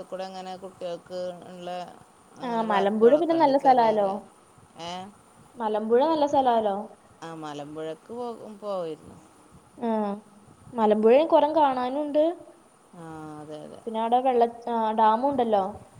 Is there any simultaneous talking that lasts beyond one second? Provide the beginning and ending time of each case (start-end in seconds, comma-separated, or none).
2.5-4.1